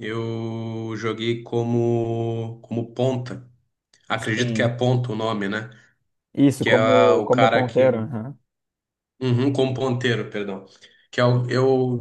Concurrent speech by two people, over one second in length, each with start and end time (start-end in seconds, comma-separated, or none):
6.6-7.9